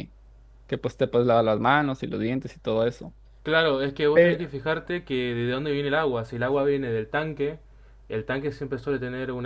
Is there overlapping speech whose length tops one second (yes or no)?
no